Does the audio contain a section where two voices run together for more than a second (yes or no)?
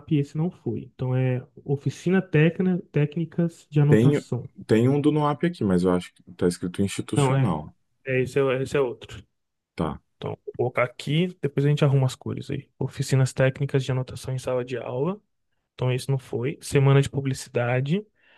no